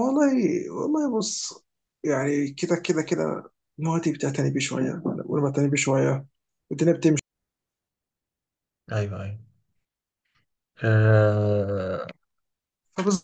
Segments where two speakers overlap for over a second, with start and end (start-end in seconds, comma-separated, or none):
none